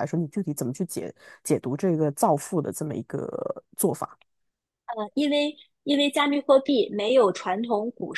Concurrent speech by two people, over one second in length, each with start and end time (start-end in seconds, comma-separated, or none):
none